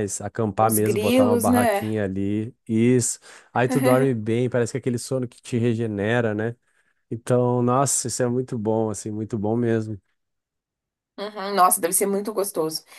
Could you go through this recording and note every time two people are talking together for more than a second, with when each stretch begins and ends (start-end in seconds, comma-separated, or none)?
0.6-1.9